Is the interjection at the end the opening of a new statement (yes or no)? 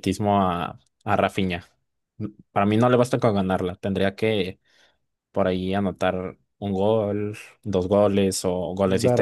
yes